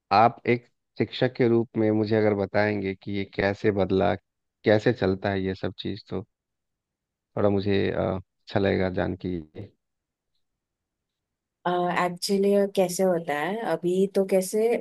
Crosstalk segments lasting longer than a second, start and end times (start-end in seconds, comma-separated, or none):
none